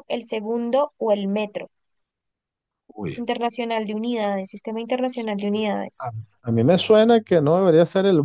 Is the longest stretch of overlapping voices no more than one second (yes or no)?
yes